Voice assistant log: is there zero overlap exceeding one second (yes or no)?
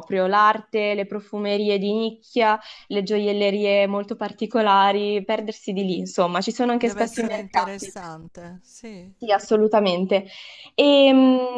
no